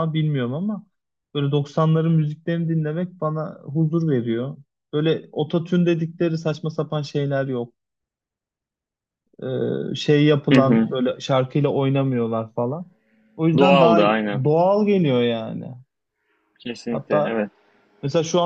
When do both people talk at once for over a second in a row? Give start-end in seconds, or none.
none